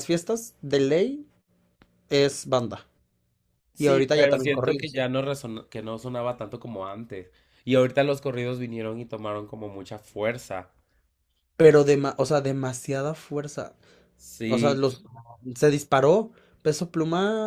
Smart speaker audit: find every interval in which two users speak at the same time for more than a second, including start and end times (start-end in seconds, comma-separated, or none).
3.8-5.0